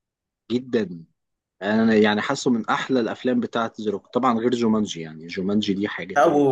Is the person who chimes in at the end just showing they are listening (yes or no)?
no